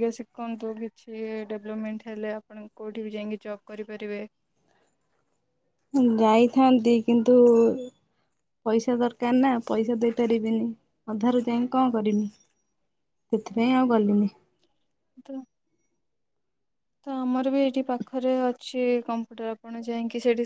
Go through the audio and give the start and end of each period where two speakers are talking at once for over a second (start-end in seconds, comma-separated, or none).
none